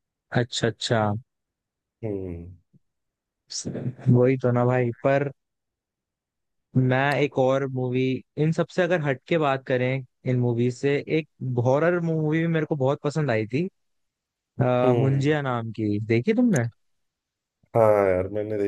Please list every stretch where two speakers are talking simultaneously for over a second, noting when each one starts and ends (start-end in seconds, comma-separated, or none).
none